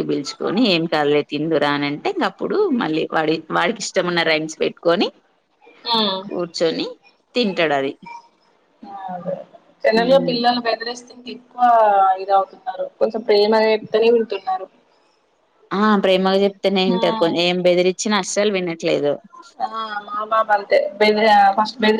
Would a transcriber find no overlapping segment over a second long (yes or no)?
yes